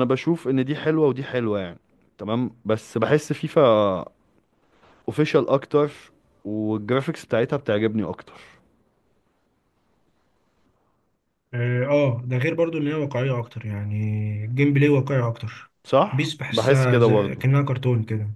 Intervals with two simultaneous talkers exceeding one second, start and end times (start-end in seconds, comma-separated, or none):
16.1-17.4